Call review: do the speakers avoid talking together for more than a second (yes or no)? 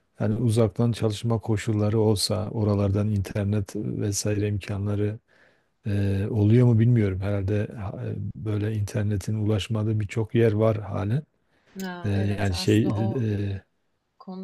no